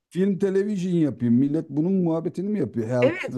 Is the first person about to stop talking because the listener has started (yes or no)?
yes